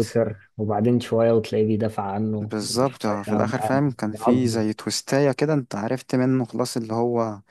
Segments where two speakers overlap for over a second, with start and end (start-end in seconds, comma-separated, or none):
2.4-4.7